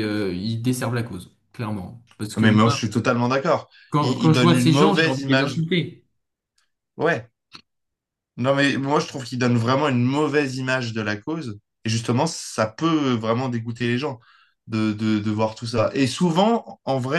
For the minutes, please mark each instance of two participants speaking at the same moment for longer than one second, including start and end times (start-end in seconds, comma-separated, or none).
3.9-5.5